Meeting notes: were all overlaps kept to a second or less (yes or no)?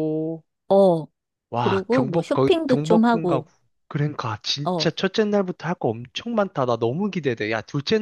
no